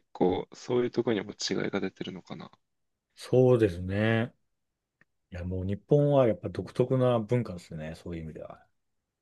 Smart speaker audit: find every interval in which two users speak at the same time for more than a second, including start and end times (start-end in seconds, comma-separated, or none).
none